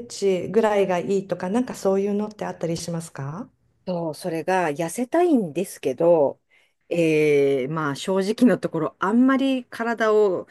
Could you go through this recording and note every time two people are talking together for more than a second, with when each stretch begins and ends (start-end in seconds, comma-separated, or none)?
none